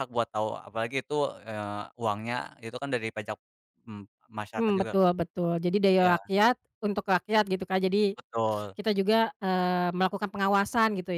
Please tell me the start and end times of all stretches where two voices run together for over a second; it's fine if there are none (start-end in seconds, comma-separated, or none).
none